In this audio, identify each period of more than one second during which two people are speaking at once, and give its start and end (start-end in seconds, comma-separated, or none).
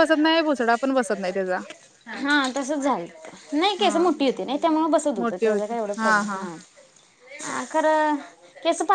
none